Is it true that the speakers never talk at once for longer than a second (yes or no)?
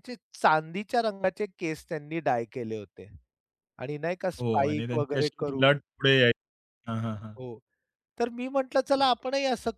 no